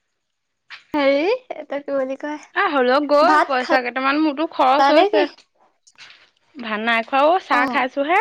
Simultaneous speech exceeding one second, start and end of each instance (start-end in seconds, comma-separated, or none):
3.3-5.2